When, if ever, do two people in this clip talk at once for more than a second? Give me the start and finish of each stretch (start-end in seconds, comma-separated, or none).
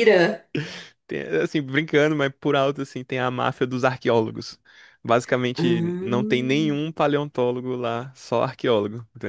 5.6-6.8